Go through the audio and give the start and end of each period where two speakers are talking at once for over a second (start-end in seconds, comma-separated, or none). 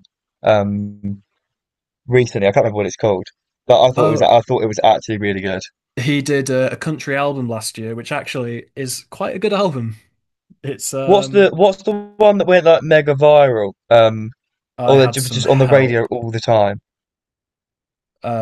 14.8-16.1